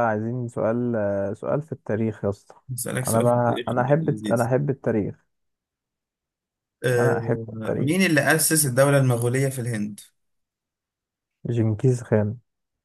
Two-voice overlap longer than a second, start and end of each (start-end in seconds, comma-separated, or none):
3.1-4.5